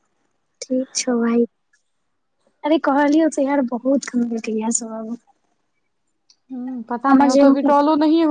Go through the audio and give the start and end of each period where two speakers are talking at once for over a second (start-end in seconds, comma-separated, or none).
none